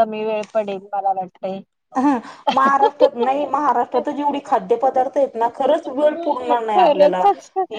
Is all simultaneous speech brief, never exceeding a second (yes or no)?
no